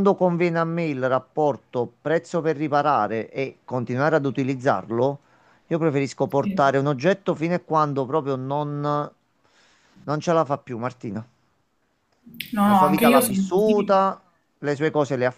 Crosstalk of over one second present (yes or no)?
yes